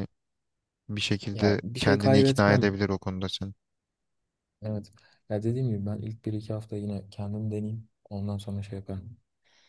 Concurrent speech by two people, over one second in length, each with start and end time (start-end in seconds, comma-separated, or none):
1.3-2.7